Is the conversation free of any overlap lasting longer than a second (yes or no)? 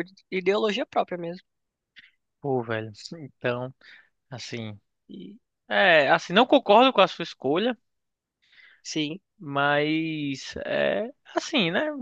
yes